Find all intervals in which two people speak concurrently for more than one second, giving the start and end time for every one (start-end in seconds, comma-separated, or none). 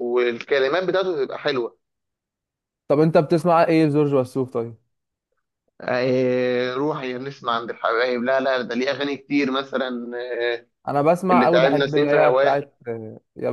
11.3-12.6